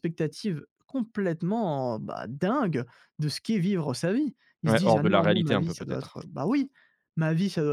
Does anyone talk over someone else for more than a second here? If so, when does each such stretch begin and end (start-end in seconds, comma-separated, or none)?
4.7-6.2